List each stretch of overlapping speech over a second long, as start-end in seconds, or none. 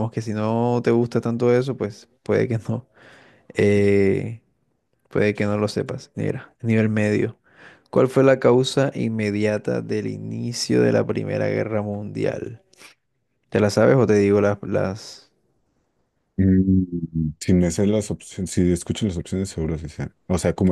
none